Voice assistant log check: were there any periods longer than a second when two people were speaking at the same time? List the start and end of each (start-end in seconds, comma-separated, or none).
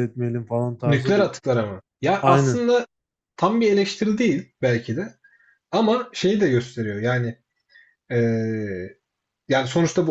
none